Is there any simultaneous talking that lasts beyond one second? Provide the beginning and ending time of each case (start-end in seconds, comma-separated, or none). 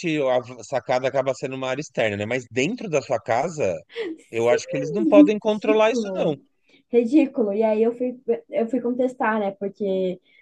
4.3-6.3